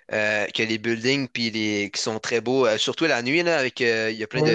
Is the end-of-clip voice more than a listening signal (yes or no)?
no